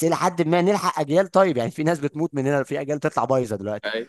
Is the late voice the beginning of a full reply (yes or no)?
yes